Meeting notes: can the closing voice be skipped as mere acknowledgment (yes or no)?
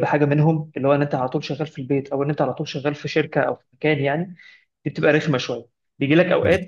yes